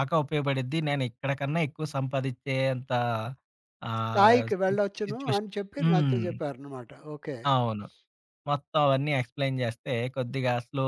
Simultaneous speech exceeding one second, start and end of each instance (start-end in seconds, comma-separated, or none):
4.1-6.3